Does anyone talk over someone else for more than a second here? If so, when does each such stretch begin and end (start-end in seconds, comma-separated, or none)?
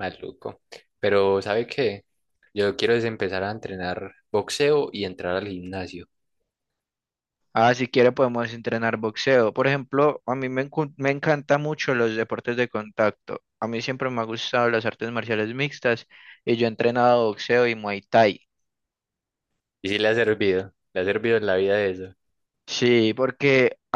none